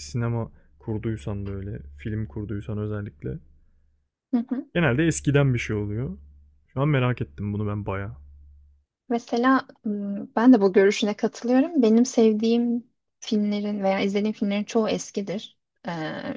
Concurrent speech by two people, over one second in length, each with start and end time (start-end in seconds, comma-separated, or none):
none